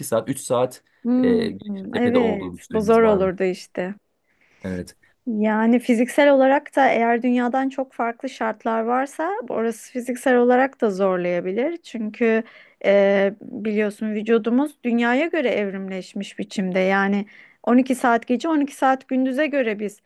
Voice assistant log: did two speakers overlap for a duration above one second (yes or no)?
yes